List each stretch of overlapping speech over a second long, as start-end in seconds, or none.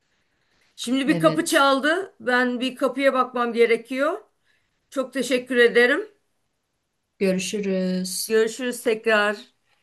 none